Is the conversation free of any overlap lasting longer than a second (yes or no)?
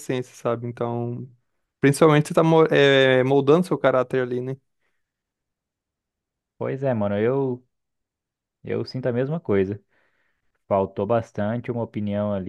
yes